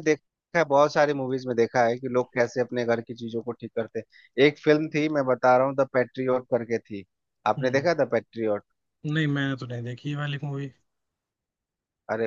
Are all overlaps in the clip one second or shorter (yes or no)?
yes